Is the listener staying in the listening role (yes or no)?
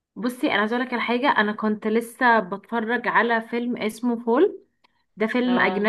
yes